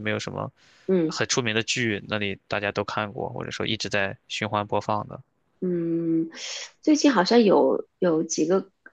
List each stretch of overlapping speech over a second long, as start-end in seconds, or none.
none